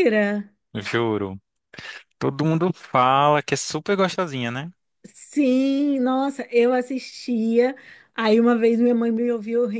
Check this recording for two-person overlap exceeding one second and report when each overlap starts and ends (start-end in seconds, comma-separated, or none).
none